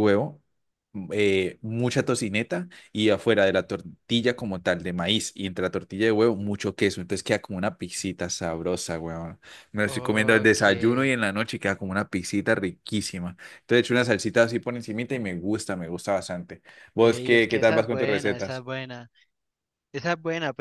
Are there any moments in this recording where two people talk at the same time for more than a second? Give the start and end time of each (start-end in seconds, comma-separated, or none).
9.8-11.1, 17.0-18.6